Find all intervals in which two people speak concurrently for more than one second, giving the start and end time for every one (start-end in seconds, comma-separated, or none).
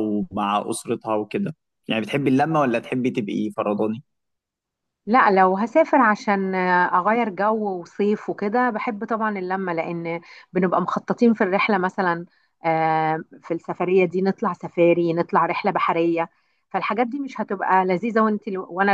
none